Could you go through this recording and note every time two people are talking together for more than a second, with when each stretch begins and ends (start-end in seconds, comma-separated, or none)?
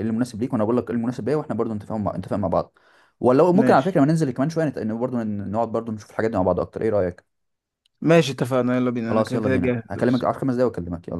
9.1-10.3